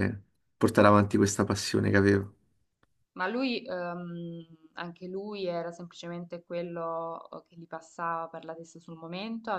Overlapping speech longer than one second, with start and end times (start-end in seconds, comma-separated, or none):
none